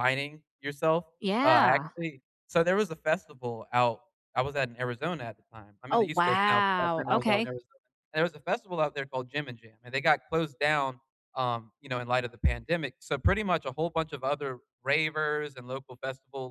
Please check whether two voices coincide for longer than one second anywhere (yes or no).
yes